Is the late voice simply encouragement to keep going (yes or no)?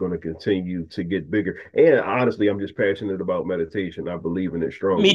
no